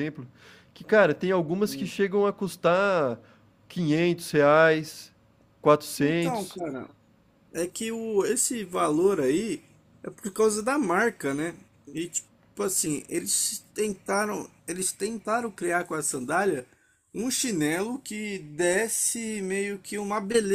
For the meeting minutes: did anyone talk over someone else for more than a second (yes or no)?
no